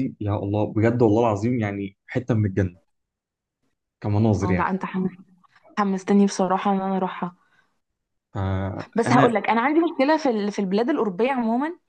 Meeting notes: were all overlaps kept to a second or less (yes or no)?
yes